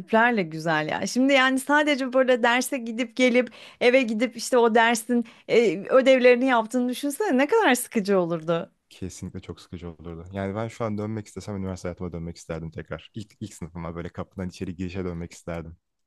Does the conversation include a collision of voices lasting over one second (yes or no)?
no